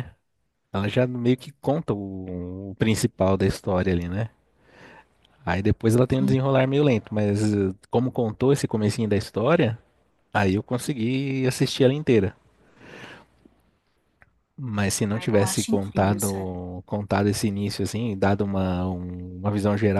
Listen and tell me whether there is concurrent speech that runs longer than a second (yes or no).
yes